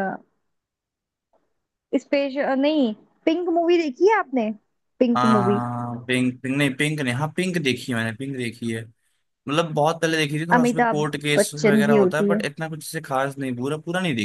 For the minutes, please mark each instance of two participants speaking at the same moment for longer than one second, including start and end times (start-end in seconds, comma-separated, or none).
10.5-12.4